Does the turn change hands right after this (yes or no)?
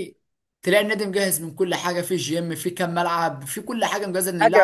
yes